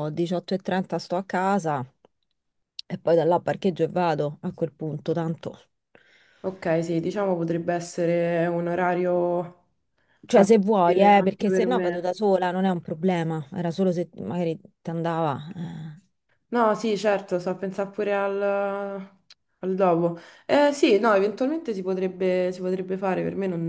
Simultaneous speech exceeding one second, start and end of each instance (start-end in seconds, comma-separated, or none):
10.2-12.1